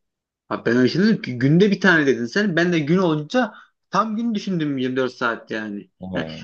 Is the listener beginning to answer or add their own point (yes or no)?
no